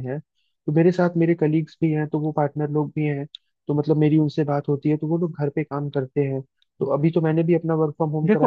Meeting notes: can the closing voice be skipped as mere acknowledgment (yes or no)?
no